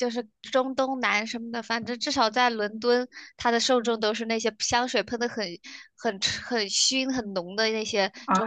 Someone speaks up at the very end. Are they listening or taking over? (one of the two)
taking over